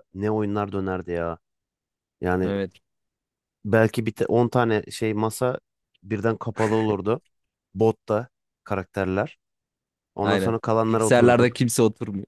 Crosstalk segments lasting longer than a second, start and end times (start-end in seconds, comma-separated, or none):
10.2-11.6